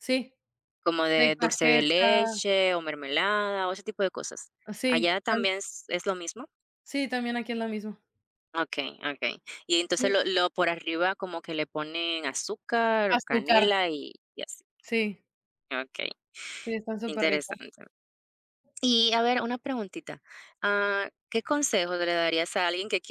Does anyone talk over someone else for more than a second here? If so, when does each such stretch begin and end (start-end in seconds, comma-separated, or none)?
1.1-2.4